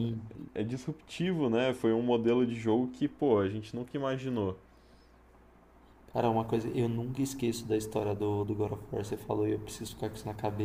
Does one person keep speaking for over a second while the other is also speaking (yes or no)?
no